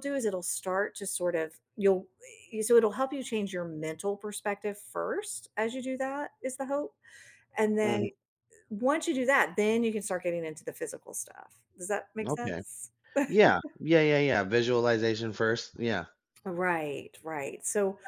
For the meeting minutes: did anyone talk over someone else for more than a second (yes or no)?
no